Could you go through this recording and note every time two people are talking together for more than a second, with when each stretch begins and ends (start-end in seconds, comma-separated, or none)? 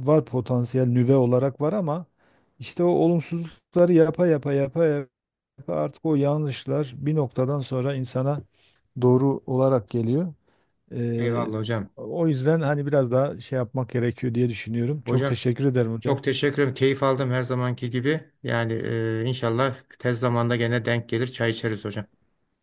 none